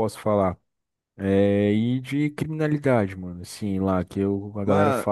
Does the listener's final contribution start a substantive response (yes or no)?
no